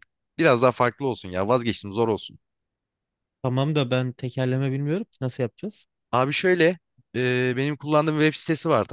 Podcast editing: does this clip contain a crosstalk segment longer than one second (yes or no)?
no